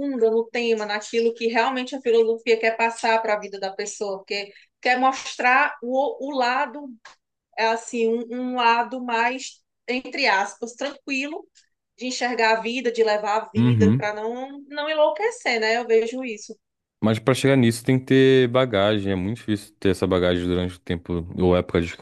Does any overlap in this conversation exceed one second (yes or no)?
no